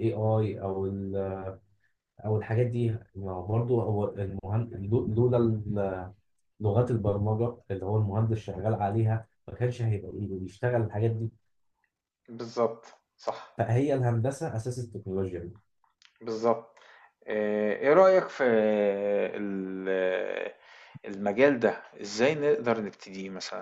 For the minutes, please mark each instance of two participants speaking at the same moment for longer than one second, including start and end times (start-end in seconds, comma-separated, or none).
none